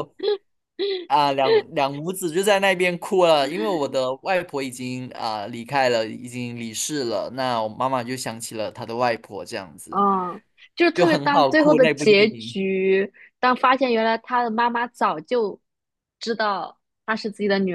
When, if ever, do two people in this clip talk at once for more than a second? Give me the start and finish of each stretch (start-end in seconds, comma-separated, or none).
10.9-12.6